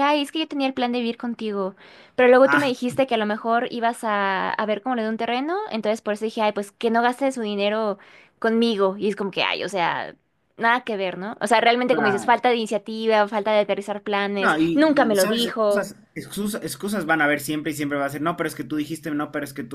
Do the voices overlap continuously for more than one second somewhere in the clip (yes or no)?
yes